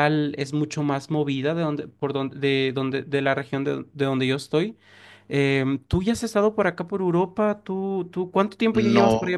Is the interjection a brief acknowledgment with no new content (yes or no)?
no